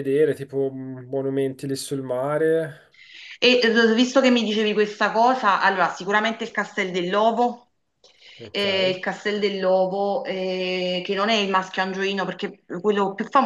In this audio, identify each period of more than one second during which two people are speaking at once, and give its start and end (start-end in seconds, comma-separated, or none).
none